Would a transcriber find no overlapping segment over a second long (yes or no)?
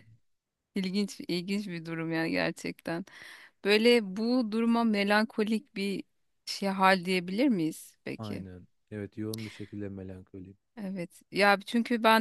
yes